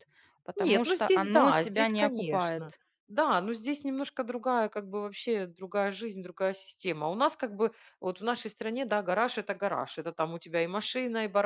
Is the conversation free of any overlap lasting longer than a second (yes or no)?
no